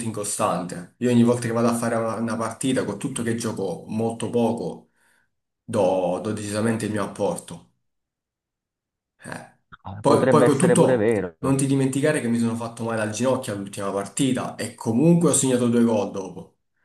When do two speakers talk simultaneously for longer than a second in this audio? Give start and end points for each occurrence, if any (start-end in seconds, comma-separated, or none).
10.0-11.4